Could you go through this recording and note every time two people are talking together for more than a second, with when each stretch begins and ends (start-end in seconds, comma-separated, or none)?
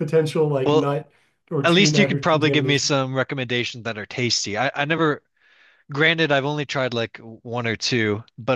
1.6-2.9